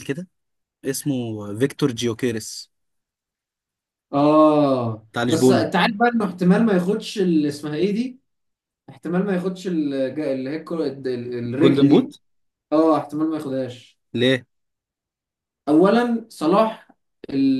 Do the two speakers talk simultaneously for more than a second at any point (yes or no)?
no